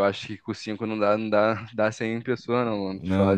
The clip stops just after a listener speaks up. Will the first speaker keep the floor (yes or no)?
no